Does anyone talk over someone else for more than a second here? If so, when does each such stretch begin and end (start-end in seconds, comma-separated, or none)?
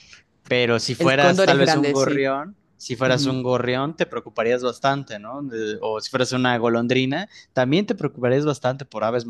1.0-2.3